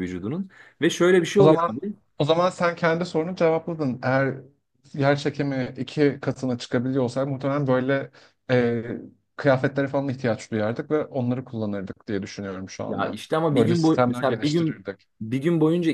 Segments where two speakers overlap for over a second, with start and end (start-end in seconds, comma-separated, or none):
12.9-15.1